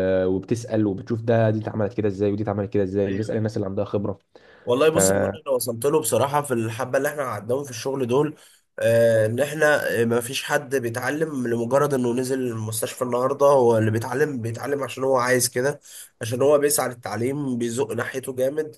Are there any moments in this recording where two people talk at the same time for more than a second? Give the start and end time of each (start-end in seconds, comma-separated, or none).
none